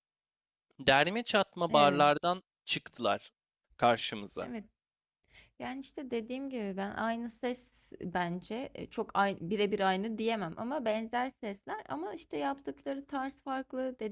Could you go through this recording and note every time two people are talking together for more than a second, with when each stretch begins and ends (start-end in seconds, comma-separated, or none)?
none